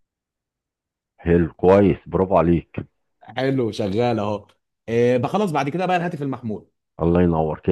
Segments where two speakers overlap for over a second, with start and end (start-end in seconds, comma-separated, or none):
none